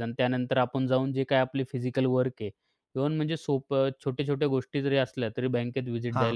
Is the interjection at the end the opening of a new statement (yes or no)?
no